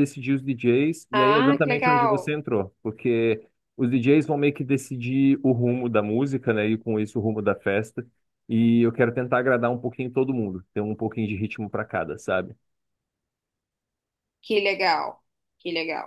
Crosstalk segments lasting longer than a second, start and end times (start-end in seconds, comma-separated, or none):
1.1-2.3